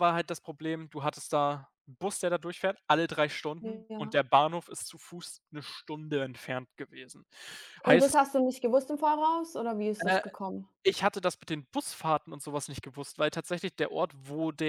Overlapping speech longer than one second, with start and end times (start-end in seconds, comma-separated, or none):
none